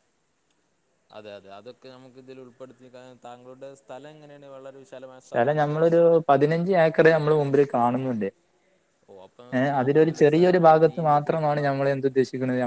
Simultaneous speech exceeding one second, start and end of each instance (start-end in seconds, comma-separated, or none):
9.6-11.7